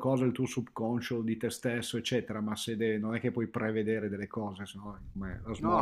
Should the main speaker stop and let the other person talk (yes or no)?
yes